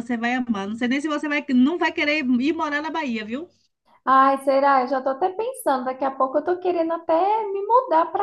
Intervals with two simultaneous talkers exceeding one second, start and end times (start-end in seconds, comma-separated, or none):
none